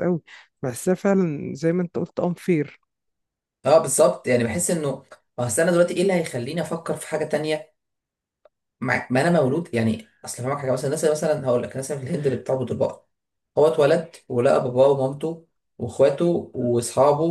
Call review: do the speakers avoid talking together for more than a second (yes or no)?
yes